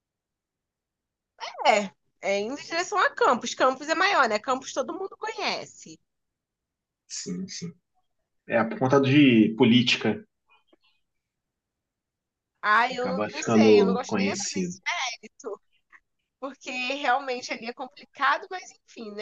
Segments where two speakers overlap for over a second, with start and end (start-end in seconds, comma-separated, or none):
12.9-14.8